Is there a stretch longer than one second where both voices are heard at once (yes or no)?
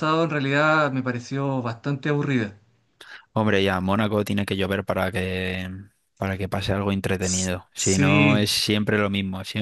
yes